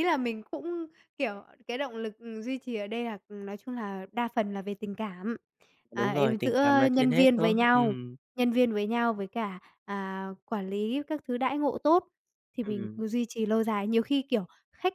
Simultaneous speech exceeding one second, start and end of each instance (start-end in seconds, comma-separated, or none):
5.9-8.0